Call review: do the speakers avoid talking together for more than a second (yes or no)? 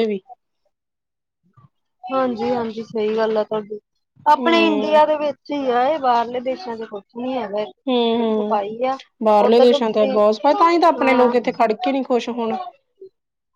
no